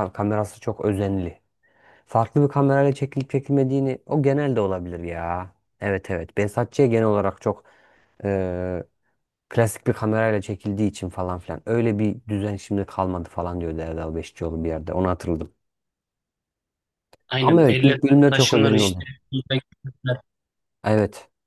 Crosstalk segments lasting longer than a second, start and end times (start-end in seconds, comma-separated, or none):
17.4-19.1